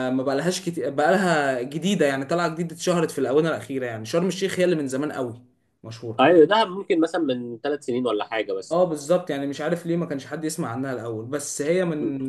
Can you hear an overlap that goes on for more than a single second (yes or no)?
no